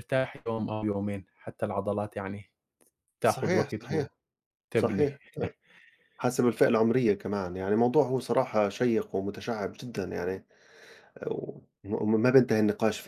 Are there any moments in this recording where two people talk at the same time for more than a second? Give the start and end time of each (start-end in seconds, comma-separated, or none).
none